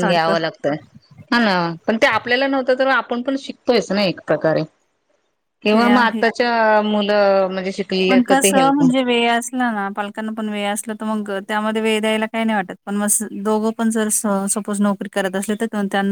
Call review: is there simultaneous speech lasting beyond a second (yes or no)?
no